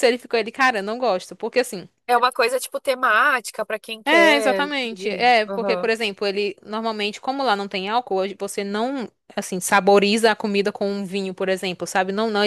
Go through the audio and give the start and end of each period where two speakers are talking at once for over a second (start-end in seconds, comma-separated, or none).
4.0-5.9